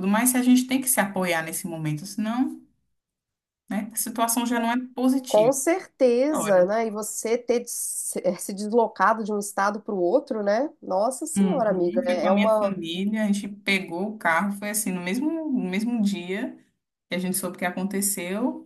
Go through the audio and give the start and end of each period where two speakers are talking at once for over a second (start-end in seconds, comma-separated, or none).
11.4-12.8